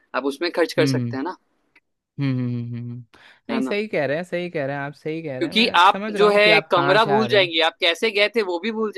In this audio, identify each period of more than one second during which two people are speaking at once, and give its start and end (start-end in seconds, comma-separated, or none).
5.4-7.5